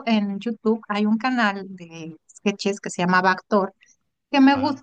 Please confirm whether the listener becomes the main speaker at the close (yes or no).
no